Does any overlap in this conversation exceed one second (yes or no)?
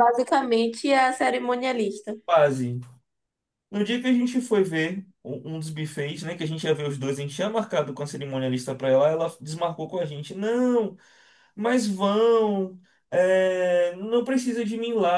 no